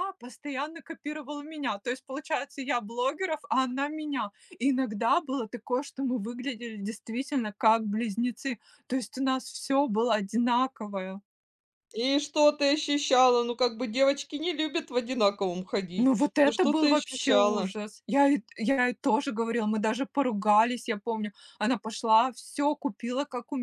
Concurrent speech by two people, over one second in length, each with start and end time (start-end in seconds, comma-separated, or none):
16.0-17.7